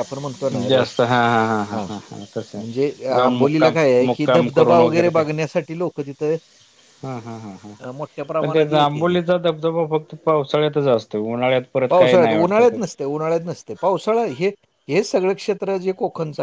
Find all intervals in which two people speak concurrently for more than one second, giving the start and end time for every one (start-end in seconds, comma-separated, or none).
3.1-5.2